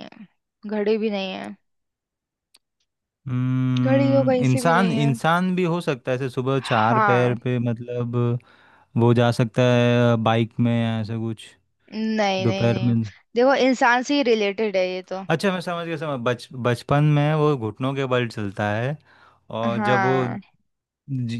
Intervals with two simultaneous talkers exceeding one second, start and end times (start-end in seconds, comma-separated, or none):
3.8-5.1